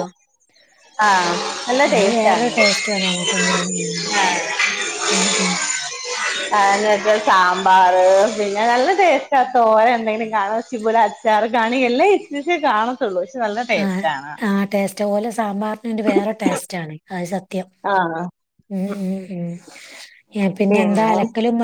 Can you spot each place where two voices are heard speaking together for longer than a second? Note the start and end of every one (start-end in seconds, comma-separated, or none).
none